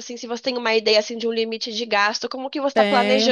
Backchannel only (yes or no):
no